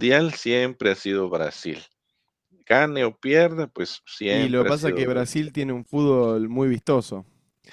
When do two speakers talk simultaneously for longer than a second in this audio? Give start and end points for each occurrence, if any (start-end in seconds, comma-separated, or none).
4.3-5.5